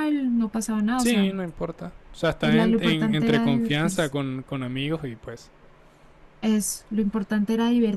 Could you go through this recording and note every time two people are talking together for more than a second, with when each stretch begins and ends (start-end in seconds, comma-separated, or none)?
2.4-4.1